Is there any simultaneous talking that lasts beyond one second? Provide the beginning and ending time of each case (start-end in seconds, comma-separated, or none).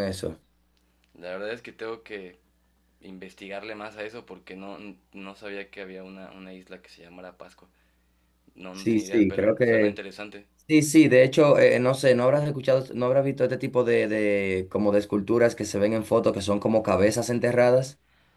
8.7-10.0